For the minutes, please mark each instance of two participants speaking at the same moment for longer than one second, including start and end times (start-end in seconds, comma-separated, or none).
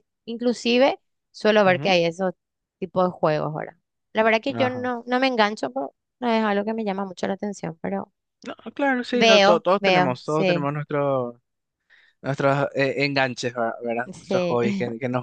9.1-10.7